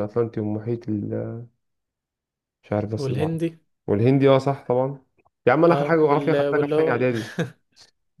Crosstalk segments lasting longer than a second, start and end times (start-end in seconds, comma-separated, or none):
5.7-7.1